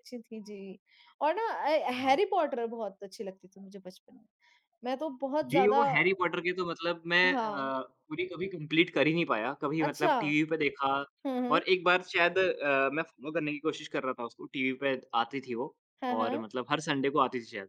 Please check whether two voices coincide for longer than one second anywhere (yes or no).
no